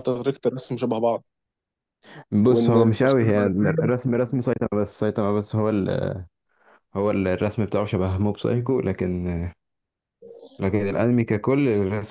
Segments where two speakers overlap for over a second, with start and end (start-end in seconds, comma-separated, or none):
2.5-4.0